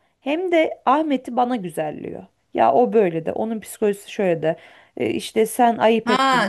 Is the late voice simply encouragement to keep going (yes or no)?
no